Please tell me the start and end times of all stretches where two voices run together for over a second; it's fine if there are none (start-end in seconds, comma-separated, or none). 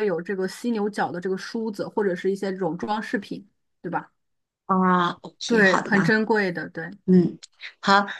none